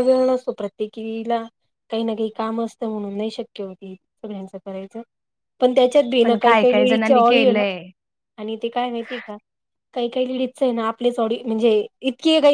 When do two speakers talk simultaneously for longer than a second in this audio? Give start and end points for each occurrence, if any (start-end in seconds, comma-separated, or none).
6.2-7.6